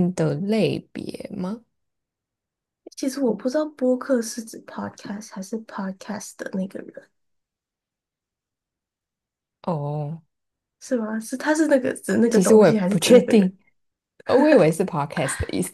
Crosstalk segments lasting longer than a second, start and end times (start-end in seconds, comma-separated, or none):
12.3-13.5